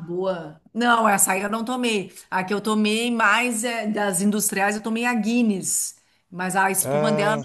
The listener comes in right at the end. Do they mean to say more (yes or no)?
no